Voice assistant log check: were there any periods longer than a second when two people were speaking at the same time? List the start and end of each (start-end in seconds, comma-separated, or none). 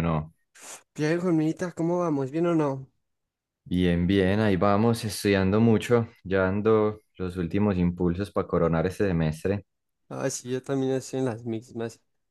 none